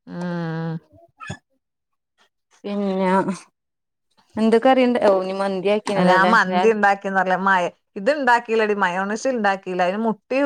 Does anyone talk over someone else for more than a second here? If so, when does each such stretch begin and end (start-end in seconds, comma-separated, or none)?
none